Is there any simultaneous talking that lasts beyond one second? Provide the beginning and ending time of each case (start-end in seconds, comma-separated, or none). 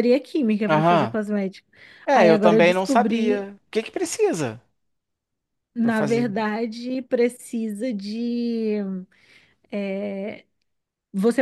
2.1-3.5